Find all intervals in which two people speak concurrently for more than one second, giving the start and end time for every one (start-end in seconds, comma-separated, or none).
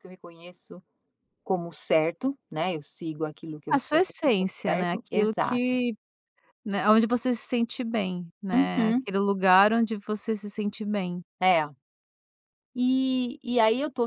3.7-5.8